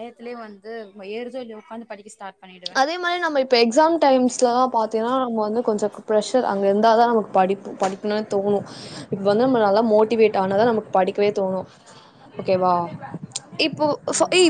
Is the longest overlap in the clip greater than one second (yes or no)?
no